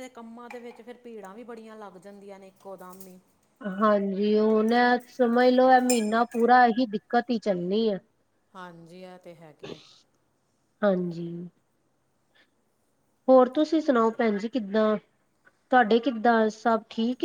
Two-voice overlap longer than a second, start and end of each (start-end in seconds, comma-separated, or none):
none